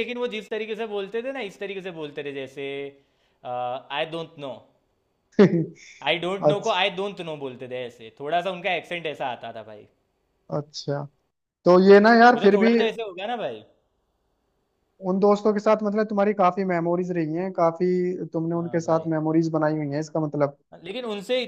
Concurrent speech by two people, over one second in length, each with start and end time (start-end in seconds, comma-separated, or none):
none